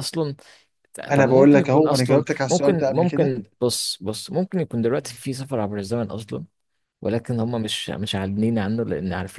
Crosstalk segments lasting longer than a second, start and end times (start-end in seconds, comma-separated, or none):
1.1-3.3